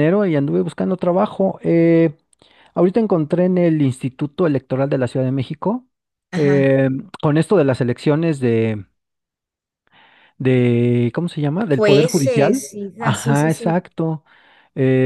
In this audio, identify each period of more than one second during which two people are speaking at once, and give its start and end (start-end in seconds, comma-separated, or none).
11.7-13.8